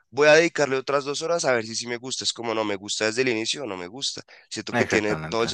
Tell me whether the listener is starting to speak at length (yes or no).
no